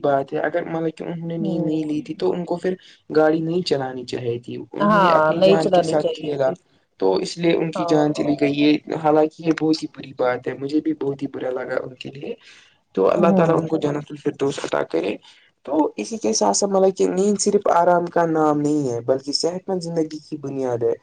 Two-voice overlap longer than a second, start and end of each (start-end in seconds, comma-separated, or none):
4.8-6.5